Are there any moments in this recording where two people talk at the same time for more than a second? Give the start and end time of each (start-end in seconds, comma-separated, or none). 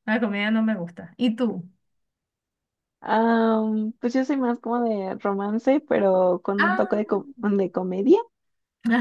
none